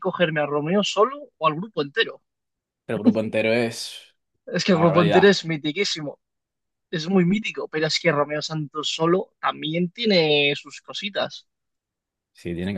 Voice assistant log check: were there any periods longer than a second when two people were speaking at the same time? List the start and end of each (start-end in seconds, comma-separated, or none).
none